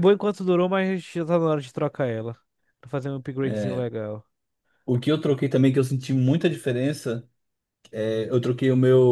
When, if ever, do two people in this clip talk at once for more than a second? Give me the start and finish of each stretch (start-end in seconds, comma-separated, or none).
none